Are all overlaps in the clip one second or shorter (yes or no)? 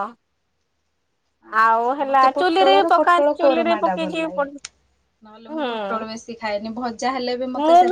no